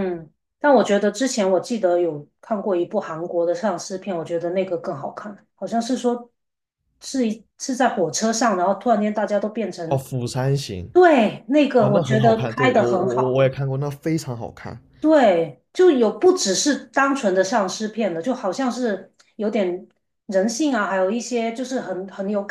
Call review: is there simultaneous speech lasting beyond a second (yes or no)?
yes